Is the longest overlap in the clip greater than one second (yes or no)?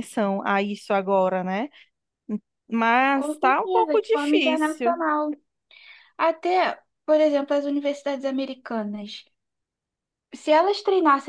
yes